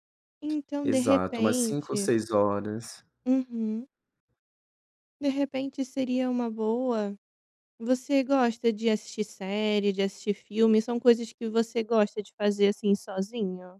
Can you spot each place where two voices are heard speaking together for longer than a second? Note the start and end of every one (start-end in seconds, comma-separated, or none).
0.8-2.1